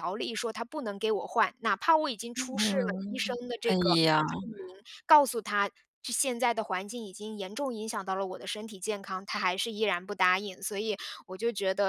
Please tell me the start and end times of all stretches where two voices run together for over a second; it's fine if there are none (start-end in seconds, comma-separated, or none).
2.4-4.2